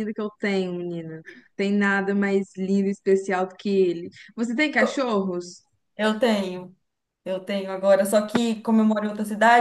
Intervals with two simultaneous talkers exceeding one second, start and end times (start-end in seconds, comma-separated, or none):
none